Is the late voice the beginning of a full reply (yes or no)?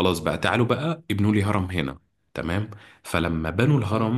no